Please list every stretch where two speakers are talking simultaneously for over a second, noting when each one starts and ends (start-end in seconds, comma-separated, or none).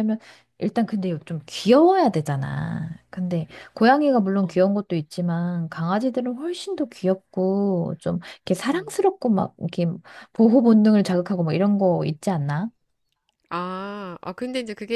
none